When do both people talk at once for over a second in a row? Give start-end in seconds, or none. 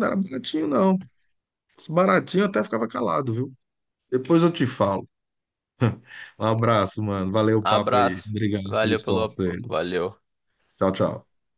7.6-9.7